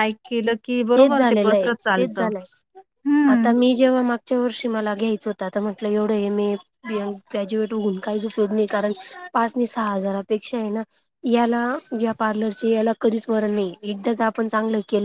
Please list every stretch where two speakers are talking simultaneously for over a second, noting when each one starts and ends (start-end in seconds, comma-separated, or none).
1.0-2.4